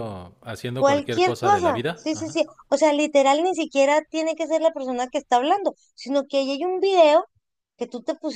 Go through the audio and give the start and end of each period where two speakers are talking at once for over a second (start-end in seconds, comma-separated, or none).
0.8-2.4